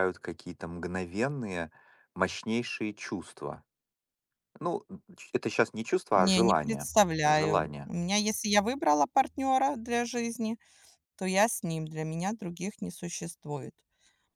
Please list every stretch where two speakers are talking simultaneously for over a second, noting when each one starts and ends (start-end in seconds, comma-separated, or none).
6.1-7.9